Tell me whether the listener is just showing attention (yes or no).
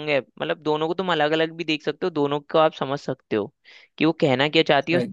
yes